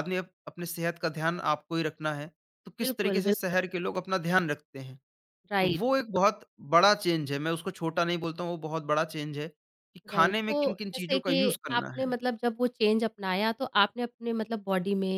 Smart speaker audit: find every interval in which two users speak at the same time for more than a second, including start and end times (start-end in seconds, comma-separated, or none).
10.1-12.2